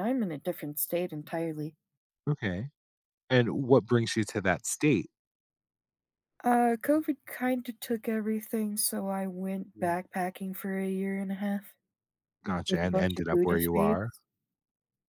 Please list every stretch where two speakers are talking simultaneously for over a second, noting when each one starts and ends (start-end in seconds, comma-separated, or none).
12.7-14.0